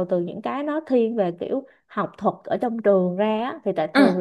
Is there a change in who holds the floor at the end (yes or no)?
no